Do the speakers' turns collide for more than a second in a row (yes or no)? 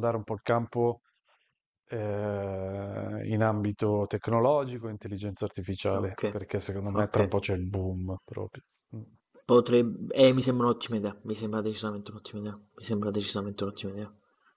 no